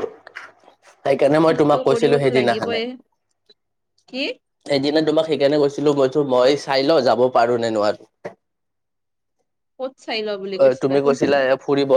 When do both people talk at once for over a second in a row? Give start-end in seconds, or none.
1.4-2.8